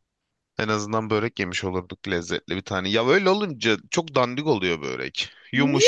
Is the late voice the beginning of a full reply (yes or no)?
no